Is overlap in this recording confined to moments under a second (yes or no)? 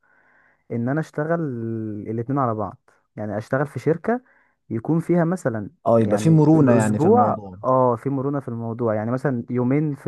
no